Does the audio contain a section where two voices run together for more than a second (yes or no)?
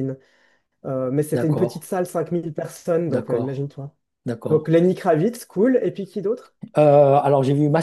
no